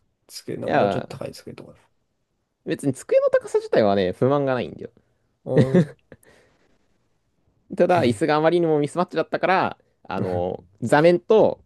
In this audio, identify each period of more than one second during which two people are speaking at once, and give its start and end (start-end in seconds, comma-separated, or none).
none